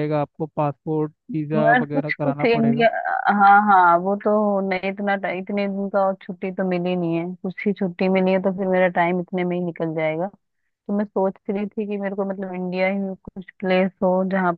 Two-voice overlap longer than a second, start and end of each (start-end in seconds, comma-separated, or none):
1.5-2.9